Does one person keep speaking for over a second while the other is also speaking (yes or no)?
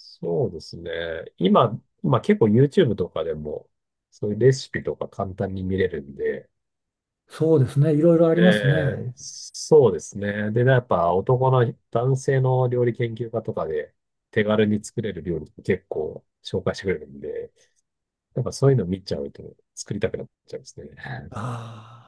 no